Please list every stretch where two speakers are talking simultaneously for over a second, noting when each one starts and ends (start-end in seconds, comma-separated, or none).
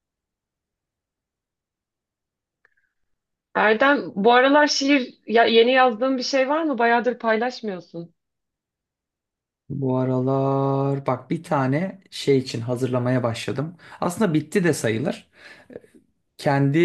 none